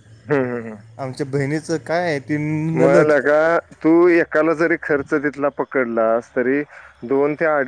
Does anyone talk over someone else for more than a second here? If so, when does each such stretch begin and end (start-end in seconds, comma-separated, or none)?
none